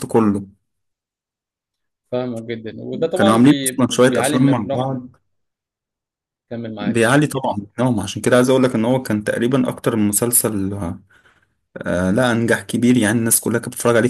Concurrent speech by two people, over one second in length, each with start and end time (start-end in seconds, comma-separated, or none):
3.1-5.0